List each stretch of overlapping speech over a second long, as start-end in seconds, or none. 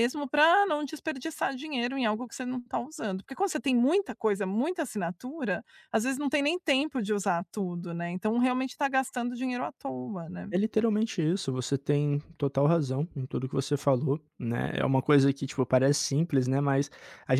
none